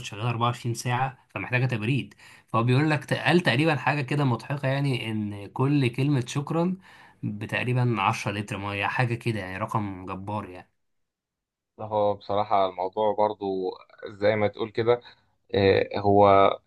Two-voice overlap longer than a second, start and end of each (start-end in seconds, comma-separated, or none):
none